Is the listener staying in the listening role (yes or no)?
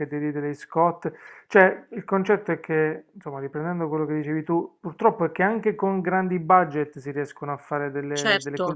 no